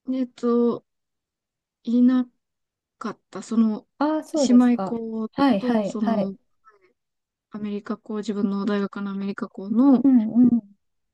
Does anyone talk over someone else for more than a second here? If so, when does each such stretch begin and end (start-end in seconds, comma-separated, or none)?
4.5-6.3